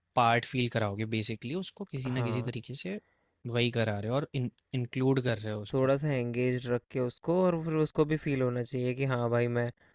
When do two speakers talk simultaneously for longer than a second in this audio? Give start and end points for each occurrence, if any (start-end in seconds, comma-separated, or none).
none